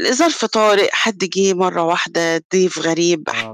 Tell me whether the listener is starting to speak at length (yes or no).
no